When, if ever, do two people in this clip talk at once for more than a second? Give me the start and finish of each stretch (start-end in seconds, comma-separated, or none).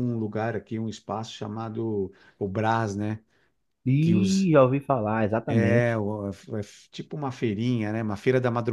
none